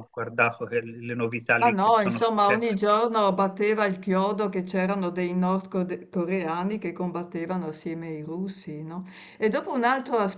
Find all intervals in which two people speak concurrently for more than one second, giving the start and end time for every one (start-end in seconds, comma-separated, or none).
1.6-2.8